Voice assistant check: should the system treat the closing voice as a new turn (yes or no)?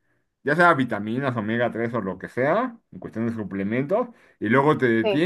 no